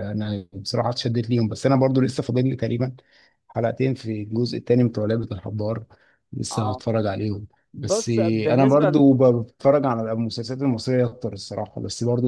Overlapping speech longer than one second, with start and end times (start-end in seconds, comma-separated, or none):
7.7-9.1